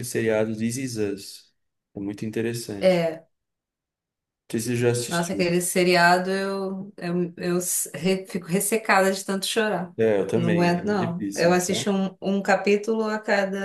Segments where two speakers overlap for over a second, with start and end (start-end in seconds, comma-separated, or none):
10.3-11.9